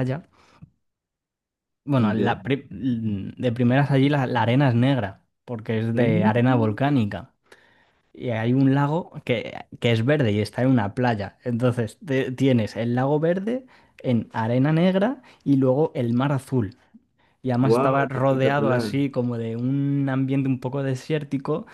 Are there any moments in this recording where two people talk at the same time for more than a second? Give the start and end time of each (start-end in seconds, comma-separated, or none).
17.6-19.0